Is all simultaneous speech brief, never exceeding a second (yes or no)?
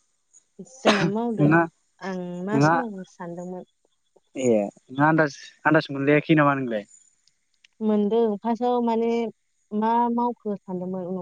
yes